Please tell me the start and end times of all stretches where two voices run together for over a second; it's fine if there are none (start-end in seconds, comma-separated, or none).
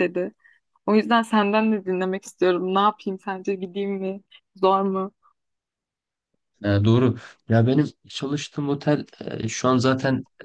none